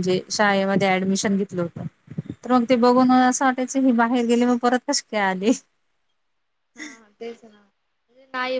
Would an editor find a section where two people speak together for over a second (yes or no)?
no